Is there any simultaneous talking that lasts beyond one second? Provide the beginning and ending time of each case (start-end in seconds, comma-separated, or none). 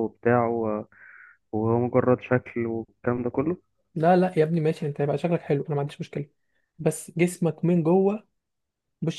none